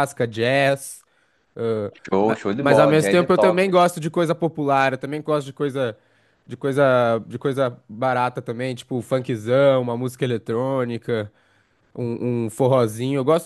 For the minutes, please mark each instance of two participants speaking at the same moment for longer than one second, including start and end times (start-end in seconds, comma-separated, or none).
2.0-3.8